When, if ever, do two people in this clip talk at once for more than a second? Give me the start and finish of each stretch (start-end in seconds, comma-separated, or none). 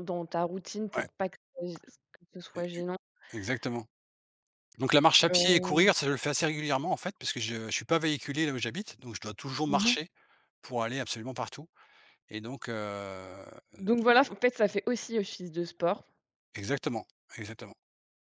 none